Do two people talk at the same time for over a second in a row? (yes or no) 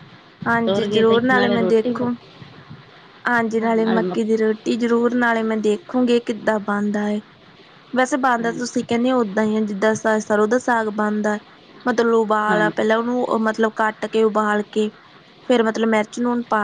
yes